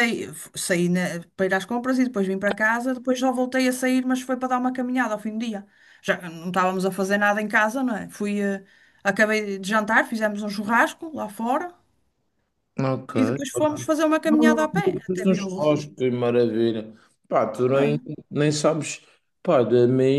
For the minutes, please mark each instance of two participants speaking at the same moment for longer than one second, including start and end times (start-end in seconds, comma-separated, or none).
14.3-15.7